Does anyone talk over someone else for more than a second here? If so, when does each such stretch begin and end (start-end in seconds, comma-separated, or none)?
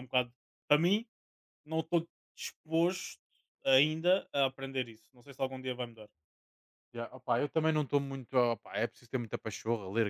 none